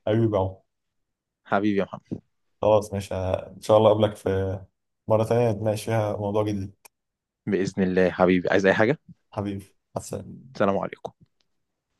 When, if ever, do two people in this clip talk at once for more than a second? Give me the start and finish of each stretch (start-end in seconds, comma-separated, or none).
none